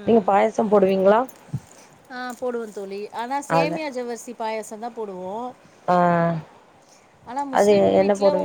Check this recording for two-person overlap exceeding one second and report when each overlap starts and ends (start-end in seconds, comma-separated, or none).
none